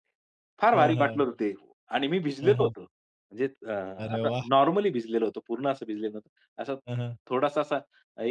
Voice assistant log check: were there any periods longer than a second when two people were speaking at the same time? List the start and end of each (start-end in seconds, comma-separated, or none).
none